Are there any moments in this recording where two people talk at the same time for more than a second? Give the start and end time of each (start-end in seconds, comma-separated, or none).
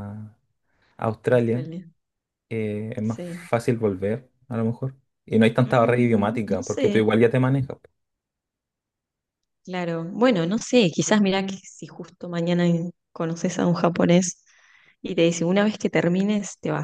5.6-7.1